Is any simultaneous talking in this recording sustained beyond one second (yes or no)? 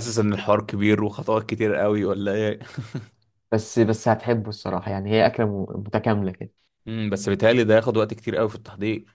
no